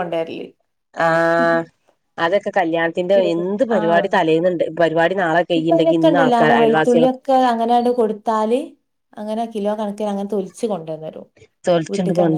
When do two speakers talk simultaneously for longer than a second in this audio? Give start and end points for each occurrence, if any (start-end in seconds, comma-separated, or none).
none